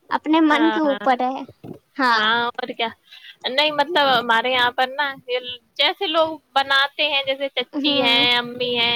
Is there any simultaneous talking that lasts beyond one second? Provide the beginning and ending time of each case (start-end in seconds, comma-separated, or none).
none